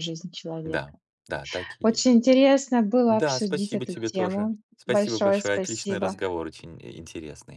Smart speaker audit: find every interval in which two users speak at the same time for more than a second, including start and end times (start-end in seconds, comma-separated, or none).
3.1-6.2